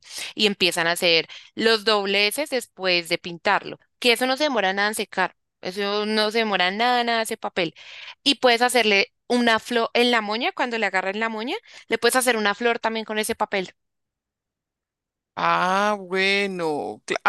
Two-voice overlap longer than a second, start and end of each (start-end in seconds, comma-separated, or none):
none